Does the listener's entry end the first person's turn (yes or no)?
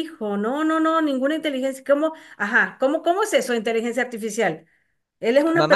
yes